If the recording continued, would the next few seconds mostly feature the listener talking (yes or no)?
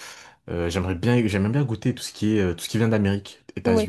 no